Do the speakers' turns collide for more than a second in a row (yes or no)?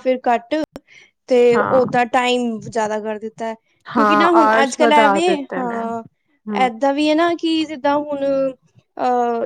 yes